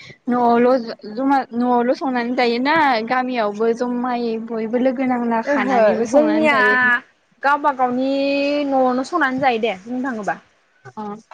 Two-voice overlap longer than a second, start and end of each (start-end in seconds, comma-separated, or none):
none